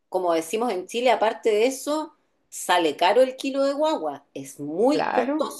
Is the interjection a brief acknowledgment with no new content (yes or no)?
yes